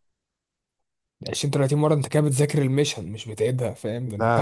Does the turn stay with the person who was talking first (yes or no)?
no